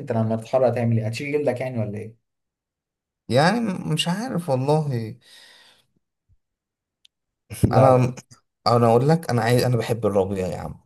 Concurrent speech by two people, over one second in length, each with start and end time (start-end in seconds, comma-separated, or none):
none